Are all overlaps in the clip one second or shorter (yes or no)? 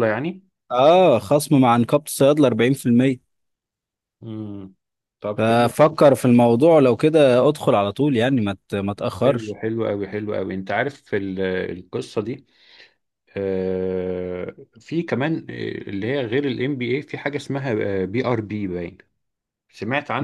yes